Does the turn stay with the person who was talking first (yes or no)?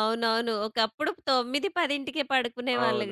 no